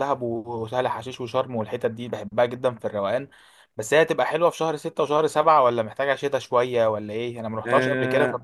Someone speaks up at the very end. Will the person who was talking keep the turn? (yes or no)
no